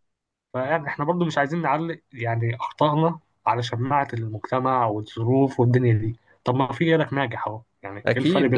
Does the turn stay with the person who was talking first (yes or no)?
no